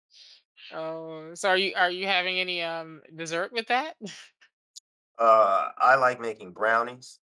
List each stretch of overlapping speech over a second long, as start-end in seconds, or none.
none